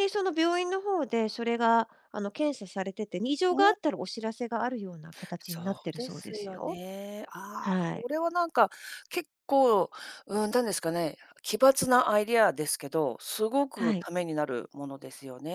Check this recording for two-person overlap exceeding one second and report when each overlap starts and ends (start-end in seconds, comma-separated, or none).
5.4-6.8